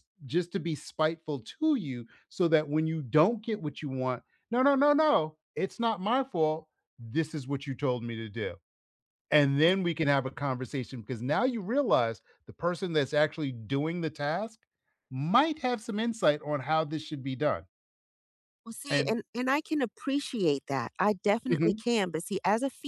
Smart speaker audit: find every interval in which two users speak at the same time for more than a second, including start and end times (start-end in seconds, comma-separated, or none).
none